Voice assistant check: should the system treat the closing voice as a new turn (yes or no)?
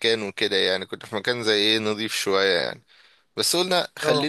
no